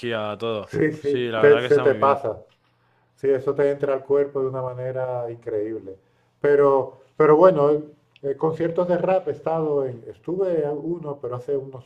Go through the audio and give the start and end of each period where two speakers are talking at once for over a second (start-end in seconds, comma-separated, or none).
0.7-2.2